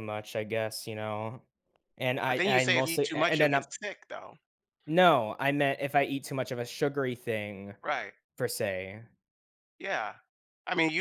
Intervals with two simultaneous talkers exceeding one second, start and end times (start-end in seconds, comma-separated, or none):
2.3-3.7